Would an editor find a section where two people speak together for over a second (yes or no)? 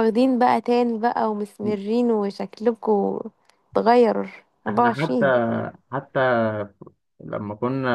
no